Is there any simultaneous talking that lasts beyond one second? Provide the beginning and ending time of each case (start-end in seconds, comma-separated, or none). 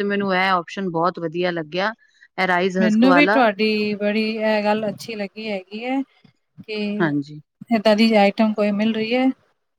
none